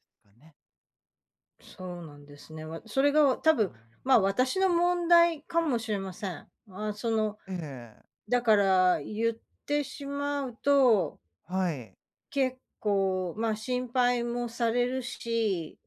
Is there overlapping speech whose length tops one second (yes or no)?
no